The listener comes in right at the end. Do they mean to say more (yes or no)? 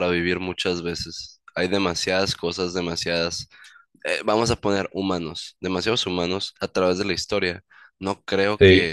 no